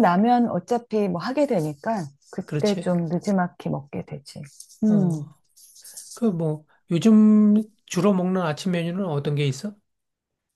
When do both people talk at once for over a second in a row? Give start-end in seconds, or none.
none